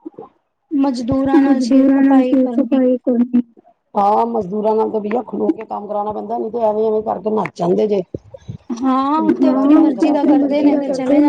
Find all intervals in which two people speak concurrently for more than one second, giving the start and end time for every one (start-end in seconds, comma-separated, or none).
1.4-2.8